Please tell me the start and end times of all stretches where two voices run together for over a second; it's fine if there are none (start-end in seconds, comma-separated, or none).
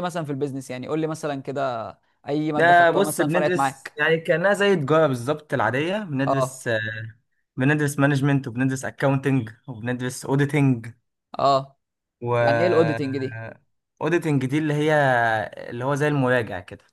2.6-4.0